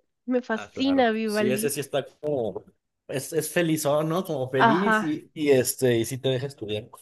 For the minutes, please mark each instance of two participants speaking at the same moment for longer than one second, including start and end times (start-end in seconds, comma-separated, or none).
0.5-1.7